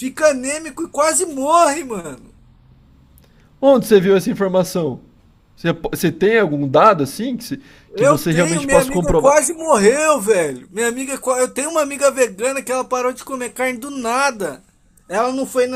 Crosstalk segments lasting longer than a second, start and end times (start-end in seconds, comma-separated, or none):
8.0-9.4